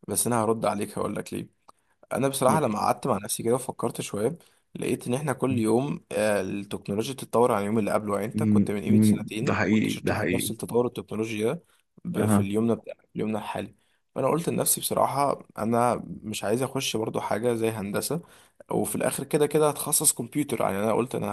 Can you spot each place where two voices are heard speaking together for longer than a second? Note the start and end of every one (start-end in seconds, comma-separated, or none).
8.3-10.5